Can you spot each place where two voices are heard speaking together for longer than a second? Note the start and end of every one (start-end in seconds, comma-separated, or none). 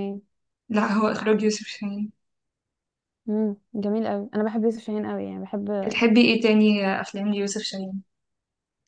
none